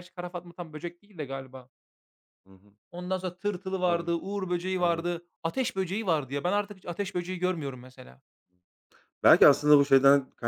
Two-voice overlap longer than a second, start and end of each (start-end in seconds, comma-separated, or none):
none